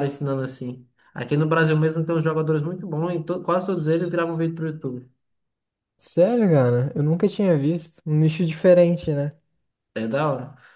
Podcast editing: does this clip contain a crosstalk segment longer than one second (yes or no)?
no